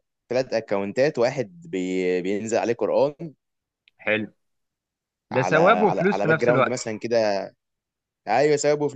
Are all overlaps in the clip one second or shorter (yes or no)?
no